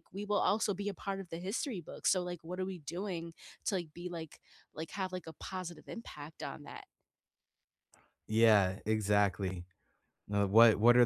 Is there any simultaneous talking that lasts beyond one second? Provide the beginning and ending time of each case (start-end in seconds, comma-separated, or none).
none